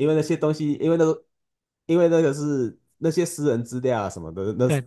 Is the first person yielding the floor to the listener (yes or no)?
no